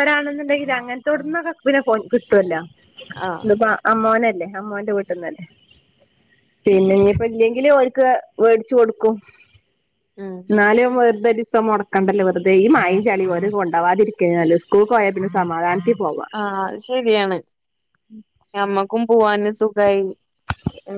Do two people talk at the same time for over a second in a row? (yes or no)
no